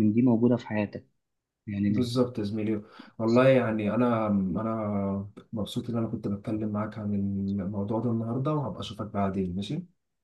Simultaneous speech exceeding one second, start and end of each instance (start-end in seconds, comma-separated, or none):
none